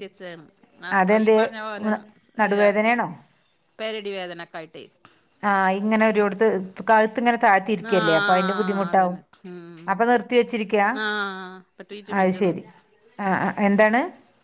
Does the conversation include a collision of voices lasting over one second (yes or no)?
yes